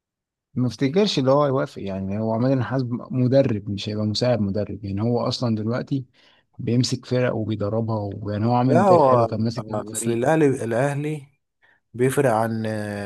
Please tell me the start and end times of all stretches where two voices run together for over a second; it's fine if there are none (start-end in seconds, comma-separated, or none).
8.6-10.2